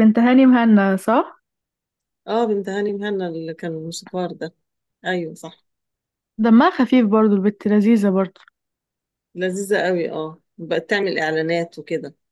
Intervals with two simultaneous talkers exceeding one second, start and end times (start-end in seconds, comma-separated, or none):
none